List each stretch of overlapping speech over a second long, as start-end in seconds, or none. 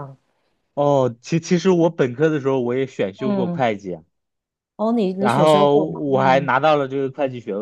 5.2-6.5